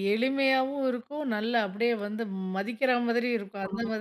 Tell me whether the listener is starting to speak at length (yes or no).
yes